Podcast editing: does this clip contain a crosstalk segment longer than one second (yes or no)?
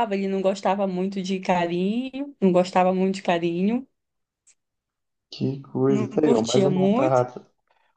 yes